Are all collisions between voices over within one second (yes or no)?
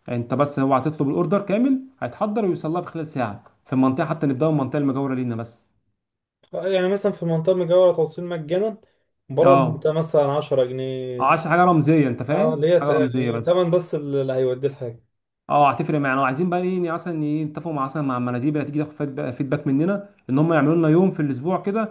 no